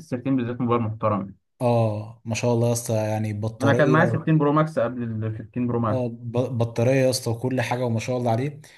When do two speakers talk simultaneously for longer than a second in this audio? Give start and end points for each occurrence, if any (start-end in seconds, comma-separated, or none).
none